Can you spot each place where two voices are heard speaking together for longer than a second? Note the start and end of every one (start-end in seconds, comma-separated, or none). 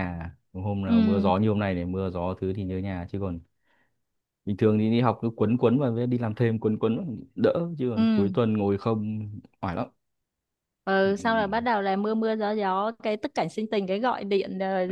none